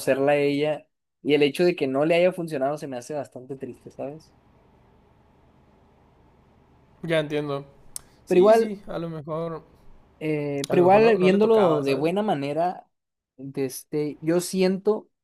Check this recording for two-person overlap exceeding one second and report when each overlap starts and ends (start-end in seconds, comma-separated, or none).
10.7-12.1